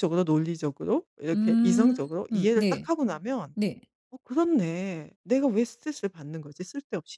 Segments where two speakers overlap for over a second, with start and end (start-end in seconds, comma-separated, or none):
1.3-2.9